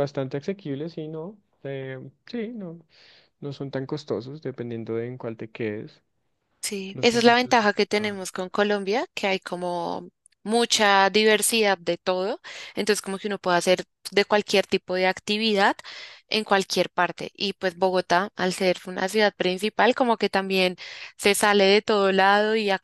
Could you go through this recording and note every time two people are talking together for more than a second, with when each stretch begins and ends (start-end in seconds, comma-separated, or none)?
6.9-8.2